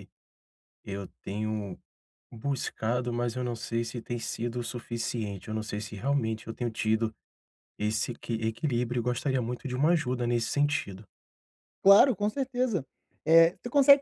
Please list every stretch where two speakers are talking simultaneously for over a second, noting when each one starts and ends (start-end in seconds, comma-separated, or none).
none